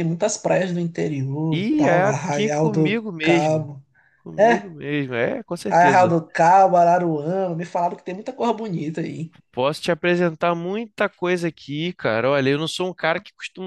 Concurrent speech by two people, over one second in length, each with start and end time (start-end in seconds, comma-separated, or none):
1.5-3.7